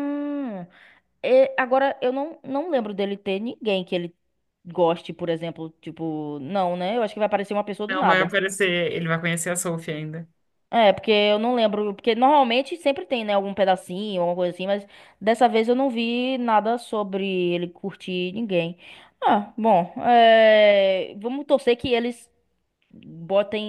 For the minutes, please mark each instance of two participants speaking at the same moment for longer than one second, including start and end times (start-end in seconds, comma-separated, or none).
none